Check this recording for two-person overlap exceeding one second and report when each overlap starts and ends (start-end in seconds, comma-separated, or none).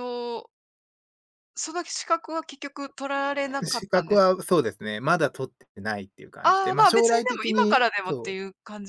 6.4-8.4